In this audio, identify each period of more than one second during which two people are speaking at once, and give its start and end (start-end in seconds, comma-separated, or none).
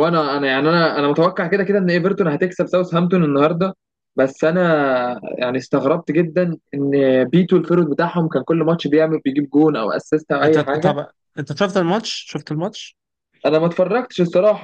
none